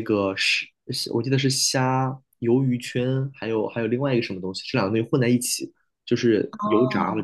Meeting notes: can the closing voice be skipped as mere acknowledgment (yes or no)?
no